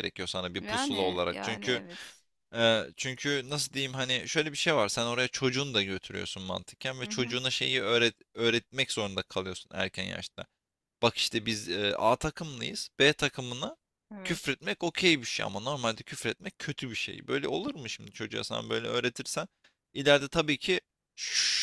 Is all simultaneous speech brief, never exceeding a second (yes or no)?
no